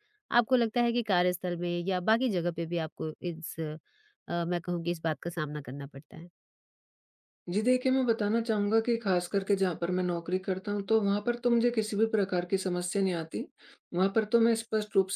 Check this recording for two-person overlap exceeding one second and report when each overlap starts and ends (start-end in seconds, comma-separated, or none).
none